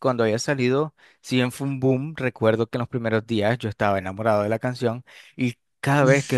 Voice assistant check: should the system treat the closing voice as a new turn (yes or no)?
no